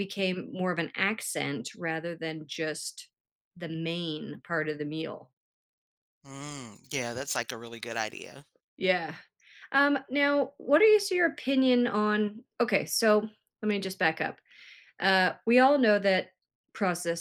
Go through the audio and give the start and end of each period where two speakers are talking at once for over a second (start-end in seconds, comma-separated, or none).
none